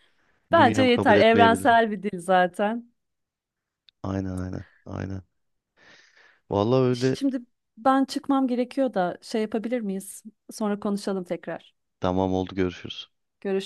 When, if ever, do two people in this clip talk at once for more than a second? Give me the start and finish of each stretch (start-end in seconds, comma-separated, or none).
0.5-1.7